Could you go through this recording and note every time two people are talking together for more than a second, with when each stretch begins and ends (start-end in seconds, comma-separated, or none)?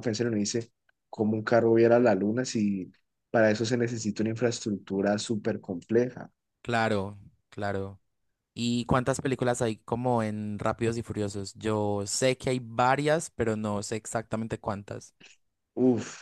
none